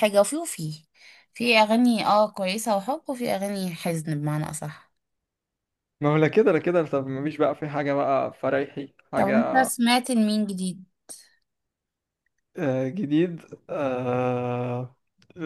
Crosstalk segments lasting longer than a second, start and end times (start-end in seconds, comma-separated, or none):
none